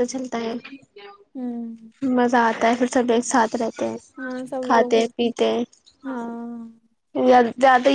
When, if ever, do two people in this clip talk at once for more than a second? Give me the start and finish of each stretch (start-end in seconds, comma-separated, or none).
none